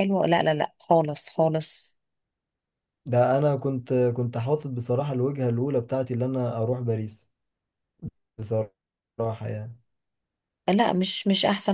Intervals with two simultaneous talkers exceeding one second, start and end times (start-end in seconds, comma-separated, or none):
none